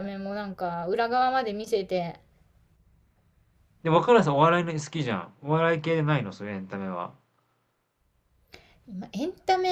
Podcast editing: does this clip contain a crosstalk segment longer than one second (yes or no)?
no